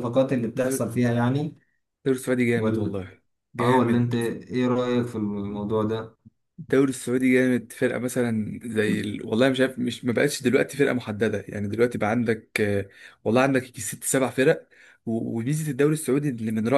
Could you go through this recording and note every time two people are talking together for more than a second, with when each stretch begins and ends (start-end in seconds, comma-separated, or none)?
none